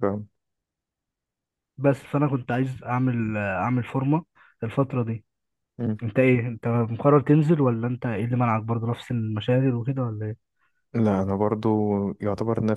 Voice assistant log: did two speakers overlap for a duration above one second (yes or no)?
no